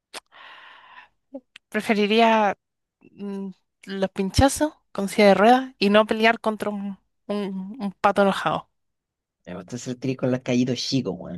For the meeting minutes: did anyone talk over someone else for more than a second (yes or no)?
no